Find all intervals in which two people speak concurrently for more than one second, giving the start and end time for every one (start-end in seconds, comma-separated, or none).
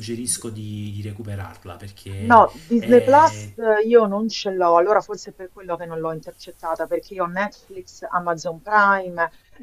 2.2-3.5